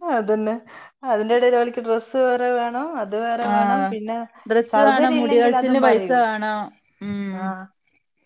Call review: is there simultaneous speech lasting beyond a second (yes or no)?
yes